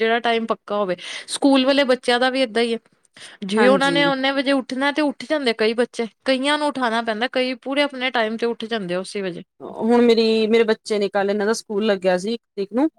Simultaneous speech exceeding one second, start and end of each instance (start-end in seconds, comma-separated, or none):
none